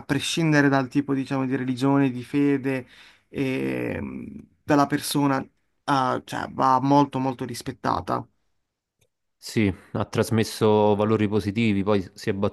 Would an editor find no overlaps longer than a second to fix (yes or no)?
yes